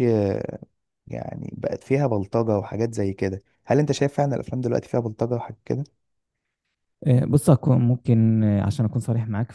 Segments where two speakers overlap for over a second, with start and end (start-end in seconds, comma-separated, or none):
none